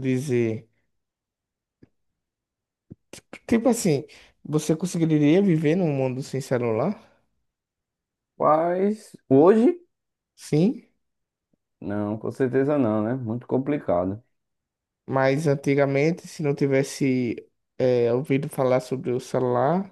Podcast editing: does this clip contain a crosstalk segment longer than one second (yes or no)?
no